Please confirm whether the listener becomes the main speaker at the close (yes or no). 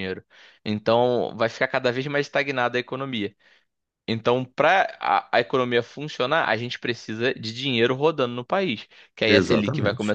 no